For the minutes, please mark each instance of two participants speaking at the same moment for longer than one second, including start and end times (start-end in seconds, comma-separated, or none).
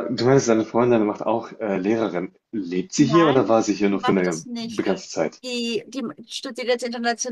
3.0-4.8